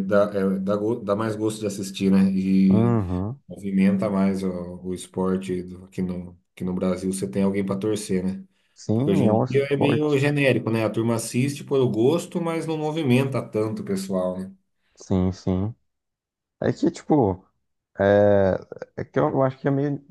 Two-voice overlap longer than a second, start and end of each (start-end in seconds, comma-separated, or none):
8.9-10.2